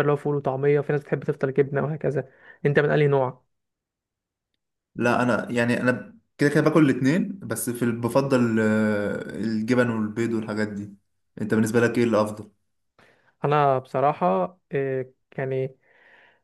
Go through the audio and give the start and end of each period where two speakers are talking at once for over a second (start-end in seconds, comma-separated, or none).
none